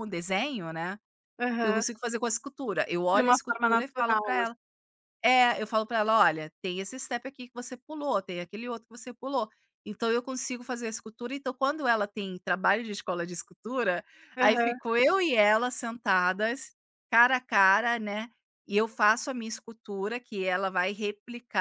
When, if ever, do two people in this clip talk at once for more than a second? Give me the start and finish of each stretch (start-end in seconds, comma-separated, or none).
3.1-4.6